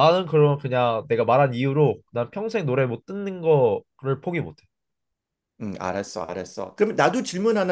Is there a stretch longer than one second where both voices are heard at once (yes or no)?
no